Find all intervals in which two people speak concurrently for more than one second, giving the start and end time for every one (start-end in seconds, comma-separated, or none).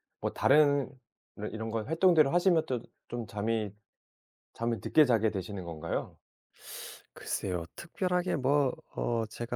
none